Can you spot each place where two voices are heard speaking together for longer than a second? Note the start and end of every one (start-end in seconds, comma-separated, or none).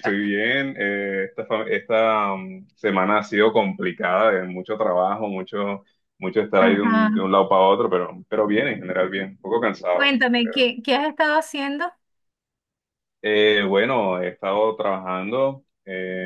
none